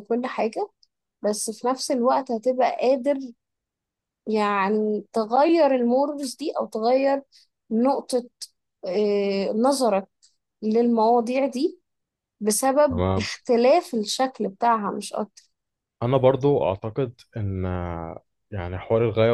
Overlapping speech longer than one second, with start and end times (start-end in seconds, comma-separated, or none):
none